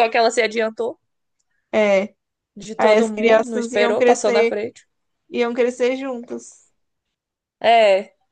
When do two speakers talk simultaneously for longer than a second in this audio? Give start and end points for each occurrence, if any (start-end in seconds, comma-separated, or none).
2.8-4.6